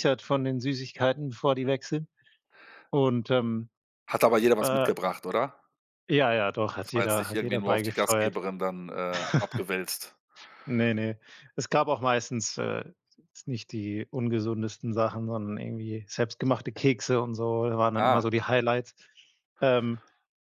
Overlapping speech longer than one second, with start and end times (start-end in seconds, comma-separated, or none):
6.8-8.4